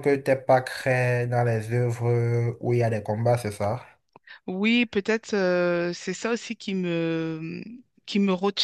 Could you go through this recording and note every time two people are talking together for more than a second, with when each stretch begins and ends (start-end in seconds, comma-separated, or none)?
none